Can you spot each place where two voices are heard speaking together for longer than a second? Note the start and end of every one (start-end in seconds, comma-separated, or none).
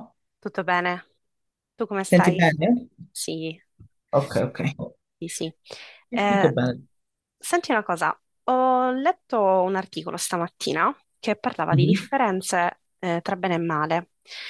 none